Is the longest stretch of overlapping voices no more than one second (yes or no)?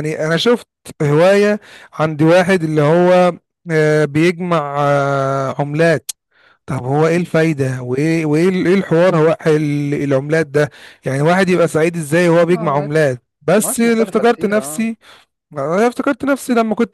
no